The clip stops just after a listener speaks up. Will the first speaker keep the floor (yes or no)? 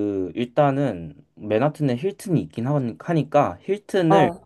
yes